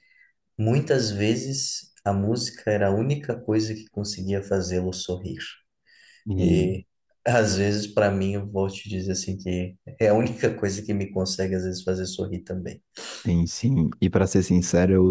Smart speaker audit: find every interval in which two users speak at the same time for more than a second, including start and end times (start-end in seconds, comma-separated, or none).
none